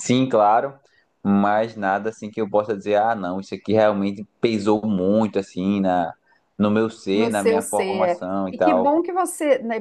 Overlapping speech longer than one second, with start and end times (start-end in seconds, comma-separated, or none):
7.1-9.0